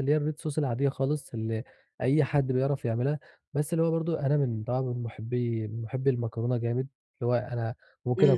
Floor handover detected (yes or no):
no